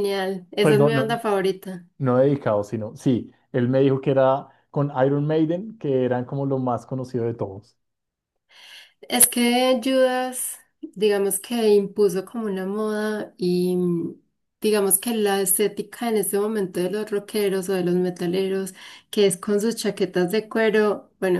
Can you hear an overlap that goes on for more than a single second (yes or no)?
no